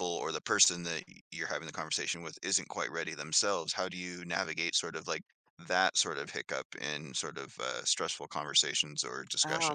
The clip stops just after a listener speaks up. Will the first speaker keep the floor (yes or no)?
no